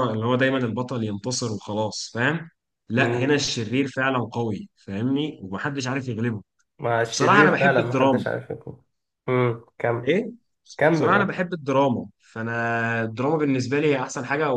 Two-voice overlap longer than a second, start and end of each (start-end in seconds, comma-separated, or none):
7.0-8.2